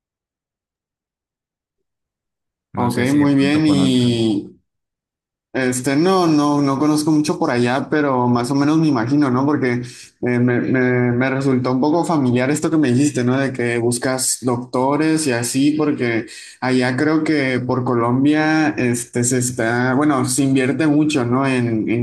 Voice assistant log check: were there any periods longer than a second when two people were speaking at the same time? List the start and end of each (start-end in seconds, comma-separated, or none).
2.8-4.2